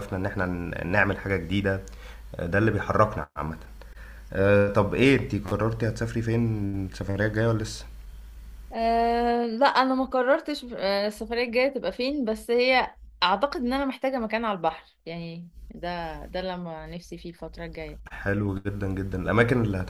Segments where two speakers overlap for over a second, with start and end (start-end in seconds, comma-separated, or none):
none